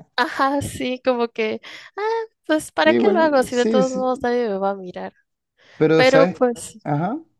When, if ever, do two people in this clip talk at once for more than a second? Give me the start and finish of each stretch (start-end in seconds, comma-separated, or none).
2.9-4.1